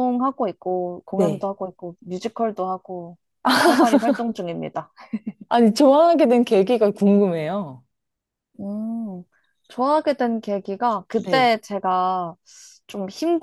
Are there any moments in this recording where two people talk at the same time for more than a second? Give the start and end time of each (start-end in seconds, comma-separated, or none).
none